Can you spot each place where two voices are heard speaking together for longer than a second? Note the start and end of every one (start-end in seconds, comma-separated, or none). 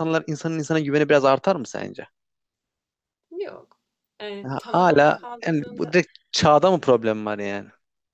4.4-5.9